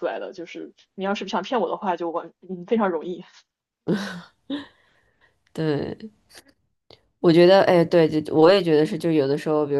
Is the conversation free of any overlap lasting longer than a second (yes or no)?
yes